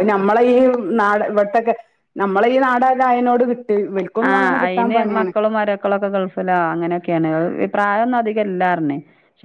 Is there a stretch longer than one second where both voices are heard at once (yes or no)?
no